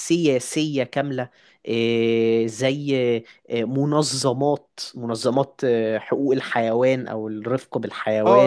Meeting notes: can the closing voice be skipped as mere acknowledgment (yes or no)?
no